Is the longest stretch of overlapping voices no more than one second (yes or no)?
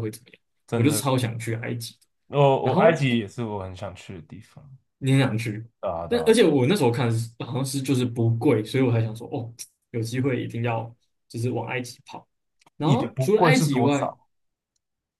no